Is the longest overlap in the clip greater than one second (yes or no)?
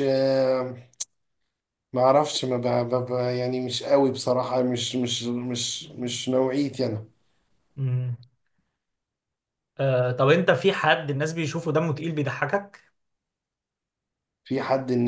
no